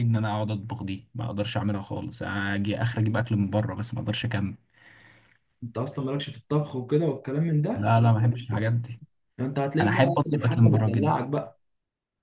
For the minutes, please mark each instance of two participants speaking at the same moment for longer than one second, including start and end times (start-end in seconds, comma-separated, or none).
9.8-11.1